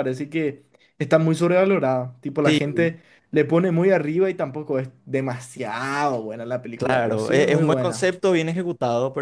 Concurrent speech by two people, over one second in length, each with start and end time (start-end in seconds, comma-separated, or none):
6.7-8.1